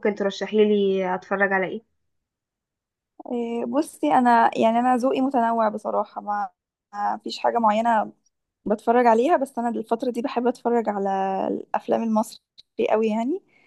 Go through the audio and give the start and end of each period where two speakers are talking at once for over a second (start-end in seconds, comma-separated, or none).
none